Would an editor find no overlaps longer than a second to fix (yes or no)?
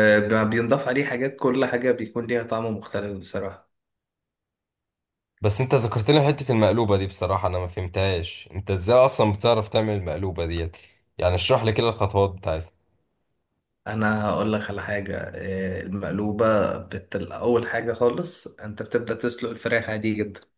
yes